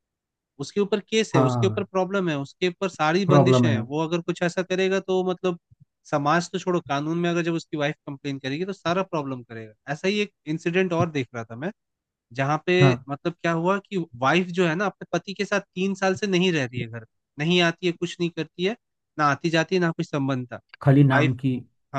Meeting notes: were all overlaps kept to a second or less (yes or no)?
yes